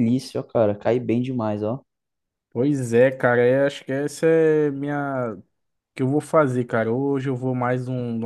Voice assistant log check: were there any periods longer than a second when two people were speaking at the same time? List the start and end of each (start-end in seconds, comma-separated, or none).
none